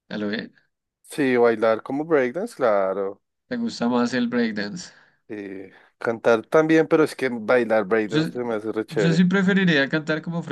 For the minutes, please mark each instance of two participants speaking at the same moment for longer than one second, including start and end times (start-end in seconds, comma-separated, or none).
none